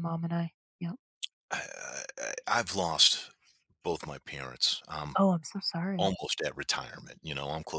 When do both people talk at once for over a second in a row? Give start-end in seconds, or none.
none